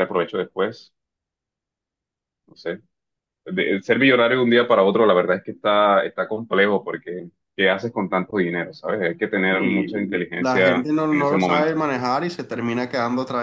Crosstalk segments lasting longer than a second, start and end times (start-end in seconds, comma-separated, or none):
9.5-11.7